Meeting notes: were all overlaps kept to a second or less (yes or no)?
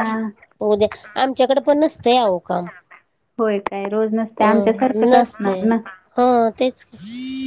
no